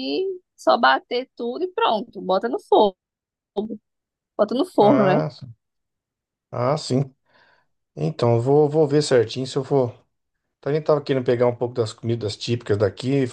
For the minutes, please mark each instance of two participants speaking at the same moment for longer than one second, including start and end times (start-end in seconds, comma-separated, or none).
none